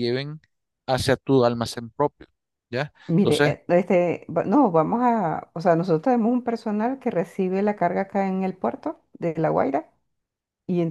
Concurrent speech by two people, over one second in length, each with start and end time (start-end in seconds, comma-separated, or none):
none